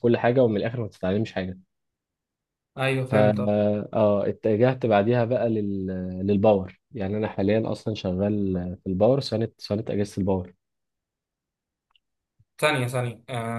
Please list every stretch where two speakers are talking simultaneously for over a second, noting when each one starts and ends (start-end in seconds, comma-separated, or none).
none